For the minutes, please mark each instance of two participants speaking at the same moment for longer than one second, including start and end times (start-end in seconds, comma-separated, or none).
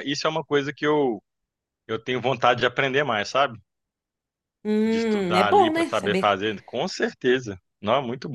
4.8-6.4